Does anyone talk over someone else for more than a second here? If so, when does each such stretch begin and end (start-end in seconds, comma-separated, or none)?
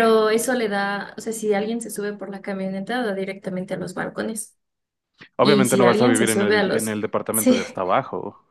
5.4-7.6